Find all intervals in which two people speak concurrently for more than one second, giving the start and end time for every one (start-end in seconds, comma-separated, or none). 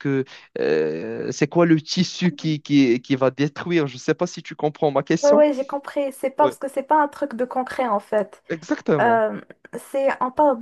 none